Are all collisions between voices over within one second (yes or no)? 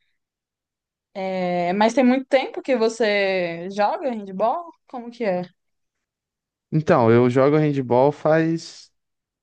yes